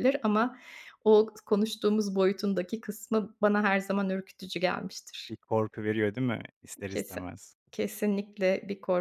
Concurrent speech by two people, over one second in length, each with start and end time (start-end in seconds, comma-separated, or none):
none